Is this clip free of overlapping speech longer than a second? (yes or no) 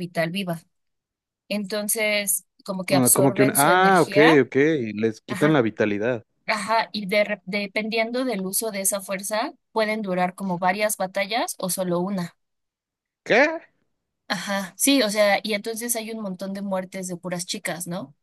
no